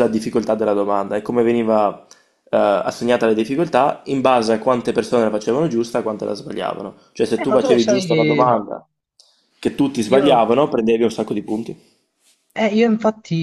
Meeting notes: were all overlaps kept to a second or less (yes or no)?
no